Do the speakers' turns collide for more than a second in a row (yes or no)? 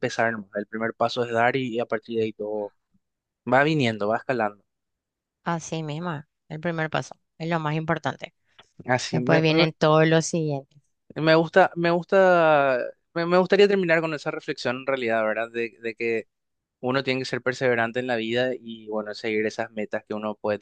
no